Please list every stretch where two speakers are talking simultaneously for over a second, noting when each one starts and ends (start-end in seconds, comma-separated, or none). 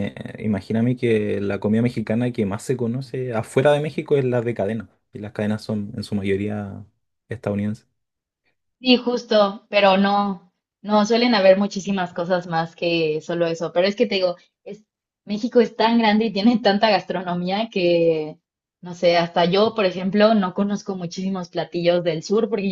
none